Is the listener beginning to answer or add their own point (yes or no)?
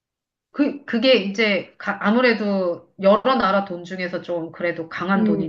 yes